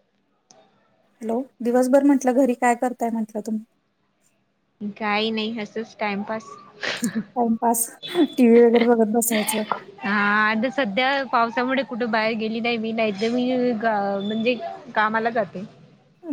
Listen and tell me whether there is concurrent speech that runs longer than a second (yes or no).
no